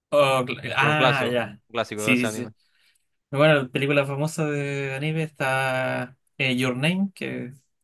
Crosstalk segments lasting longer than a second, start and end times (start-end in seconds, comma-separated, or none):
0.8-2.5